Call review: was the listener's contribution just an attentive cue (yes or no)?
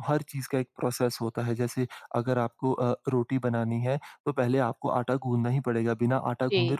yes